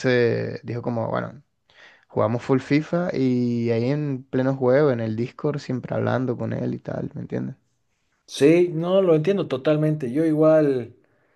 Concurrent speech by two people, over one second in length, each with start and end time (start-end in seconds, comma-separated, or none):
none